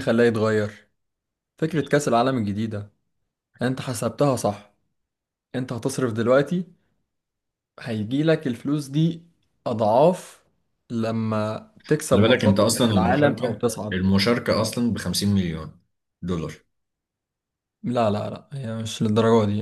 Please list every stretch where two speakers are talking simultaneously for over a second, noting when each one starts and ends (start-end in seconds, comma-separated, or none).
12.1-14.1